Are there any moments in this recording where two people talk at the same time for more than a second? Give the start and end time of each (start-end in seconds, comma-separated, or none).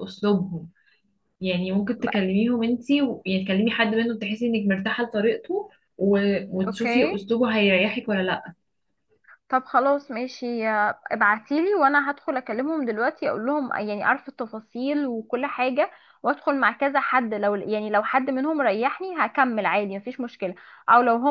none